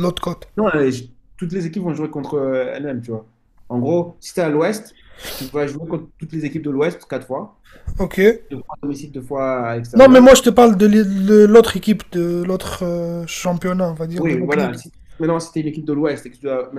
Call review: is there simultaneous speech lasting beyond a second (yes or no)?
no